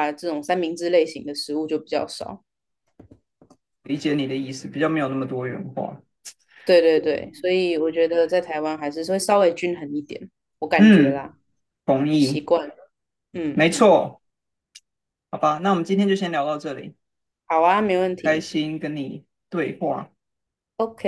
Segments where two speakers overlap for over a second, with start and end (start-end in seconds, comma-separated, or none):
none